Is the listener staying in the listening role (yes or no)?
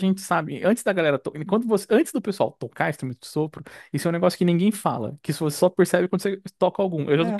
yes